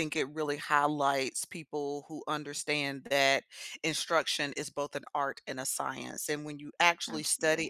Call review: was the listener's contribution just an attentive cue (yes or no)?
yes